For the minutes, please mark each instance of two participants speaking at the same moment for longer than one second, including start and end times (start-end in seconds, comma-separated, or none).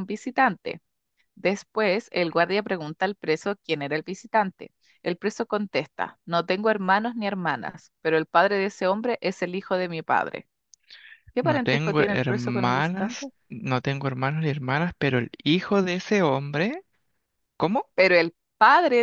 11.4-13.3